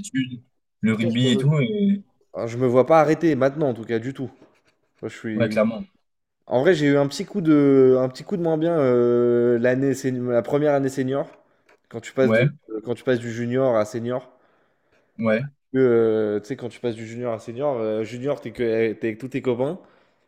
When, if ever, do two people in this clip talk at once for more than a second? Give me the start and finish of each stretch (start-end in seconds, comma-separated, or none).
none